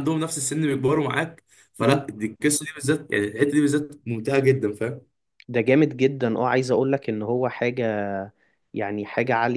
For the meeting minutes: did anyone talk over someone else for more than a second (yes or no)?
no